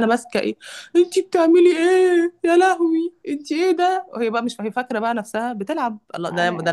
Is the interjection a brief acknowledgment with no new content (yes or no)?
yes